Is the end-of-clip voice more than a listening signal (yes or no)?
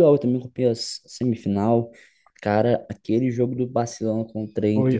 yes